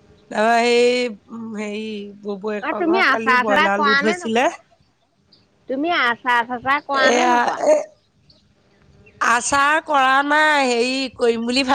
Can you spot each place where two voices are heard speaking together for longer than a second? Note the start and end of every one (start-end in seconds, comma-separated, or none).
2.7-4.5